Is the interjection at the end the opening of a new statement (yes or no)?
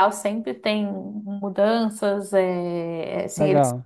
no